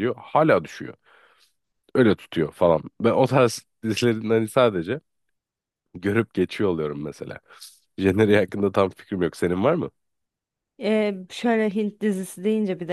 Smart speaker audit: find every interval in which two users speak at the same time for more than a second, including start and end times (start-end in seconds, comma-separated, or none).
none